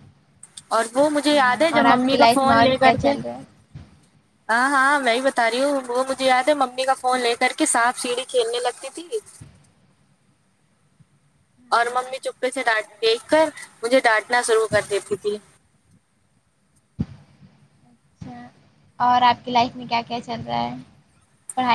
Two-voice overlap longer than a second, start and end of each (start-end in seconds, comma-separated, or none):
1.3-3.1